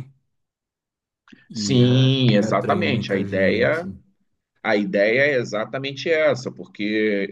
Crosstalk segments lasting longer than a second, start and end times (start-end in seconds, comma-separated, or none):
1.5-3.9